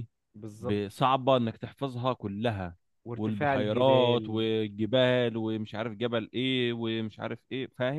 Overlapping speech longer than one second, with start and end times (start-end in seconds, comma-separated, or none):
3.1-4.4